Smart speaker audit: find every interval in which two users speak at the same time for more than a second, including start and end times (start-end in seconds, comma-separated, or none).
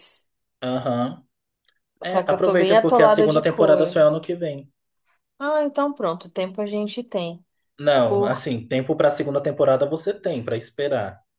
2.0-4.1